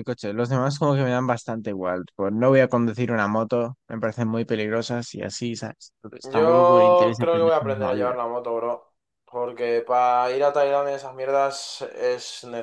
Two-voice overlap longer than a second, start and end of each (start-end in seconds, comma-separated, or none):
6.2-8.1